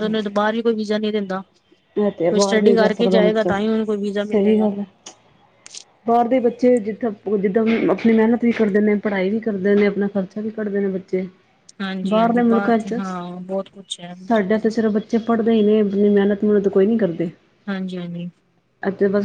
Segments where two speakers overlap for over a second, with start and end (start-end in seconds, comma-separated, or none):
2.3-3.5